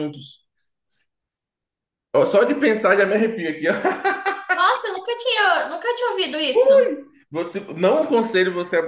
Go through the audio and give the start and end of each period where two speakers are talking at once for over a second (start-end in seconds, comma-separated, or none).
none